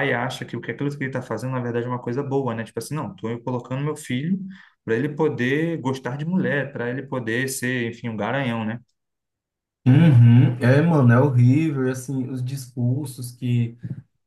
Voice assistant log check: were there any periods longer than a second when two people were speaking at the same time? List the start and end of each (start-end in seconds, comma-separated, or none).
none